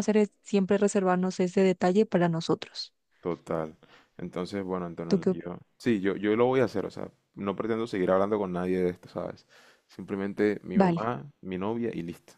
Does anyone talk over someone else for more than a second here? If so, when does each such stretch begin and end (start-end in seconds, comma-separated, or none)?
none